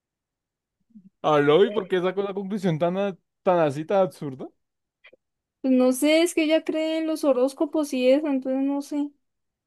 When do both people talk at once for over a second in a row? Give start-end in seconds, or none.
none